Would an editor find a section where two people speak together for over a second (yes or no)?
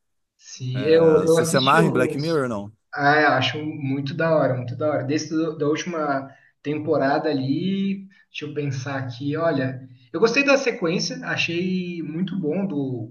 yes